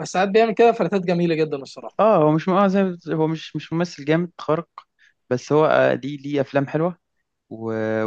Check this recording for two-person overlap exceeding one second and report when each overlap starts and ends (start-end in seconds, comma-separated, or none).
none